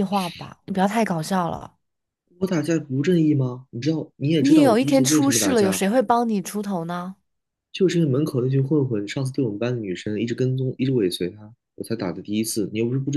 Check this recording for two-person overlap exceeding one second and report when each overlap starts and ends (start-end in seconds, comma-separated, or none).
4.4-5.8